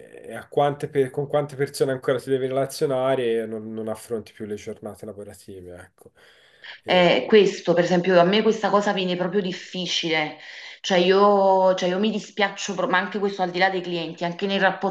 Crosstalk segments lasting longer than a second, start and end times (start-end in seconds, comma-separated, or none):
none